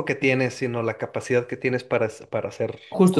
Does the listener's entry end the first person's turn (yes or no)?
yes